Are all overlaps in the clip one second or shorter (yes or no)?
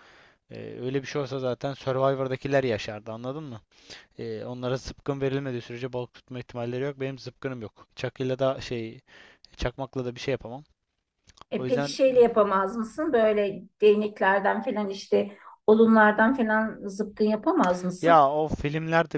yes